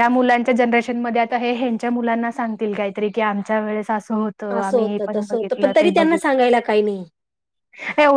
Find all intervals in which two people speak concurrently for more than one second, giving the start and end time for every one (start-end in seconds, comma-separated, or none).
4.5-6.3